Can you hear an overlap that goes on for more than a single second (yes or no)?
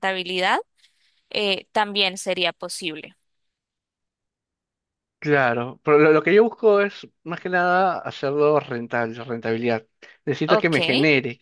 no